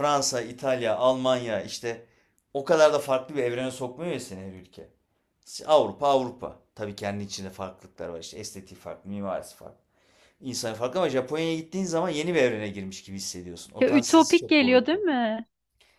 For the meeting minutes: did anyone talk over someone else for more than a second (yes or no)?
yes